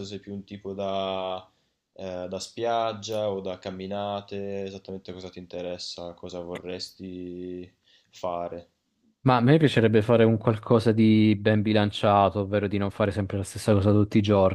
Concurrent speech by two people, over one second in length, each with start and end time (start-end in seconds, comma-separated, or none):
none